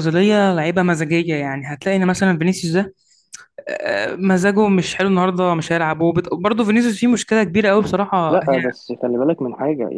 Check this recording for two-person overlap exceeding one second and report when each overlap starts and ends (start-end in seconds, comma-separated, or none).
none